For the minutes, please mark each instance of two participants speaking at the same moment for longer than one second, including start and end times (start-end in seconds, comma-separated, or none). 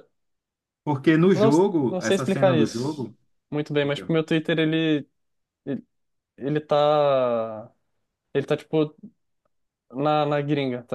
1.3-3.1